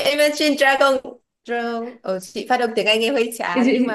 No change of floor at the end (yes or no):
no